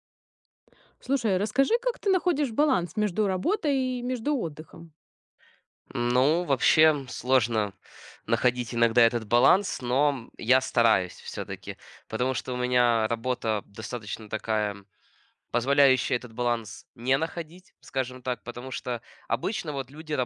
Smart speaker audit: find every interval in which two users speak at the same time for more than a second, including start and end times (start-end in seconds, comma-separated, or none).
none